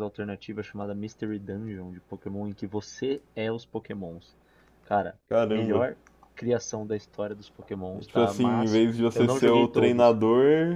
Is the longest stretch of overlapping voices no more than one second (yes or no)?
no